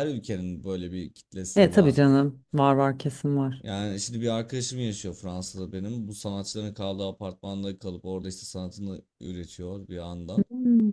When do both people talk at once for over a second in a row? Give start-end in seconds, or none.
none